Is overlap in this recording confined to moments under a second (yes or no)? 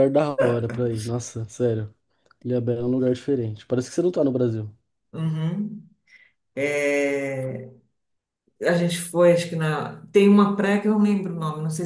yes